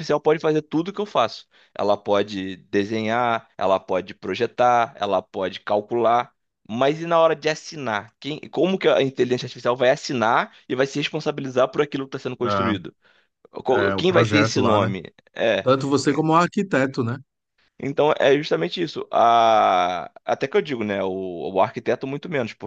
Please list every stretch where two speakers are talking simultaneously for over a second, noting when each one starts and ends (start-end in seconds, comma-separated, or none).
13.7-14.9